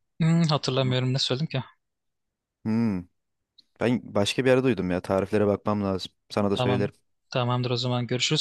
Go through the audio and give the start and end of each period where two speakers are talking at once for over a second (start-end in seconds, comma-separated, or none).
none